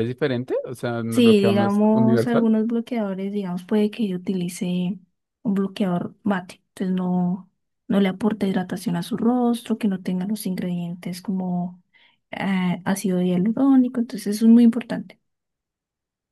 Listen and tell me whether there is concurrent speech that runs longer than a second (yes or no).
yes